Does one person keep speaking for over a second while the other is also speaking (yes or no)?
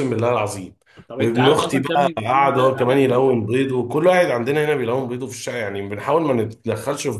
yes